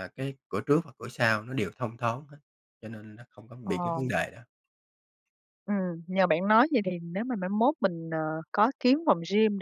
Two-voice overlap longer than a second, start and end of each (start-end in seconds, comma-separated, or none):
none